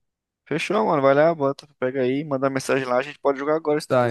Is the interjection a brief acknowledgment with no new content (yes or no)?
no